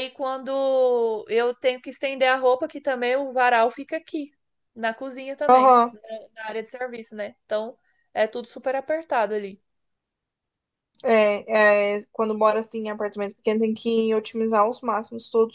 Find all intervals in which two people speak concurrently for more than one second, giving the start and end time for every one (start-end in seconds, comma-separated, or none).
none